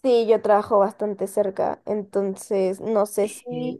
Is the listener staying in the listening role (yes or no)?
yes